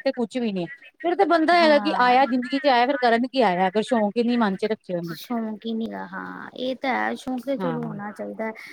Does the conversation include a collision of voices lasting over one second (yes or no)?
no